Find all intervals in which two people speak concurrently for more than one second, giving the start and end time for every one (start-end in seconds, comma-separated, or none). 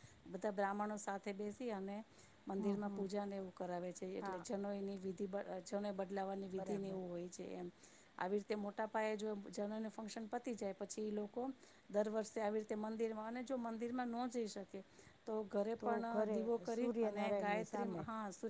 15.8-18.0